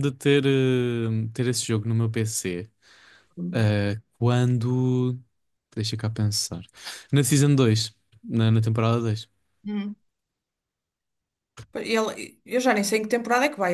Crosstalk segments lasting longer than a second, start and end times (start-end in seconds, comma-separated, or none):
none